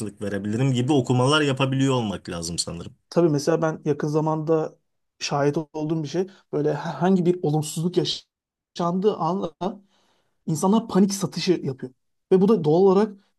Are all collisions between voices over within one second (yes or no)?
yes